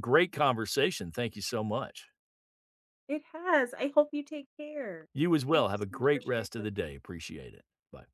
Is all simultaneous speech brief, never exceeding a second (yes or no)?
no